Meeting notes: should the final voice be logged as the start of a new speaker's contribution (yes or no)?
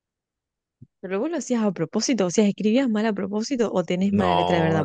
yes